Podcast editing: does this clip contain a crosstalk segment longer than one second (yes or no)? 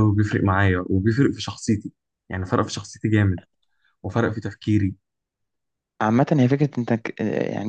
no